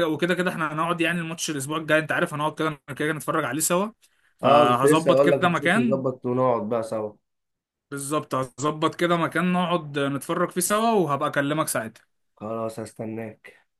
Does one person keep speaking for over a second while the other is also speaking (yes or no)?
yes